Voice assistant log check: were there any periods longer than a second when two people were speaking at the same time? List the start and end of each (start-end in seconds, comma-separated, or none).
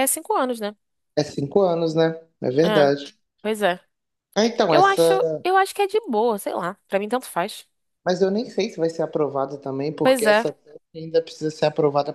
none